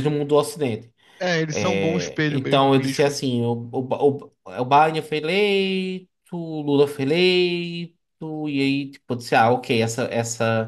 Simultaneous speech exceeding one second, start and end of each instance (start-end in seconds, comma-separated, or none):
1.5-3.2